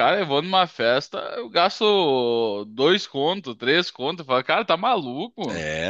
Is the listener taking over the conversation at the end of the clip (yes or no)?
yes